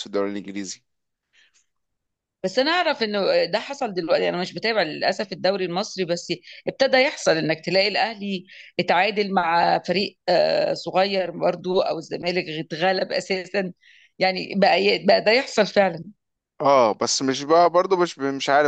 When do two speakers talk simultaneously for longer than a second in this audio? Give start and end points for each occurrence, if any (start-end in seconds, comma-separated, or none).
none